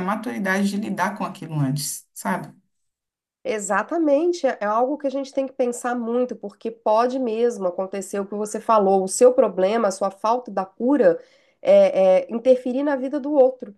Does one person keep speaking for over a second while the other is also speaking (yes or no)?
no